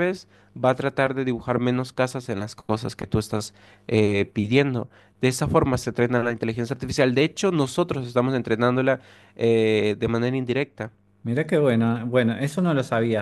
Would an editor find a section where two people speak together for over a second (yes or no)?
no